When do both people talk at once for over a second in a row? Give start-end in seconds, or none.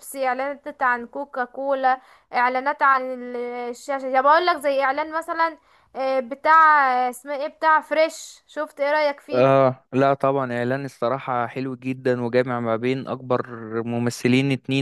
none